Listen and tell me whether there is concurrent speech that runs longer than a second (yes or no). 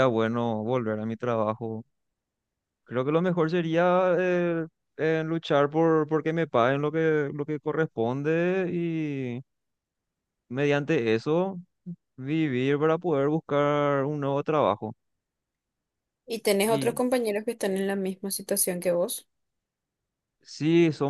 no